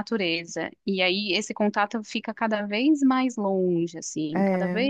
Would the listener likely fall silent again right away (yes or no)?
yes